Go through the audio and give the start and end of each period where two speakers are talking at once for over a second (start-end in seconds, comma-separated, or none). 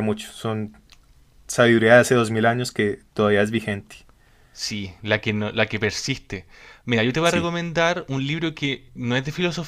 none